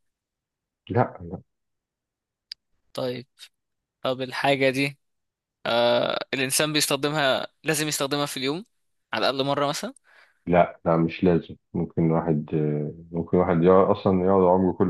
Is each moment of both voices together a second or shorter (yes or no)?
yes